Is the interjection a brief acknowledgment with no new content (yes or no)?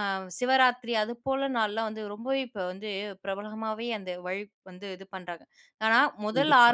yes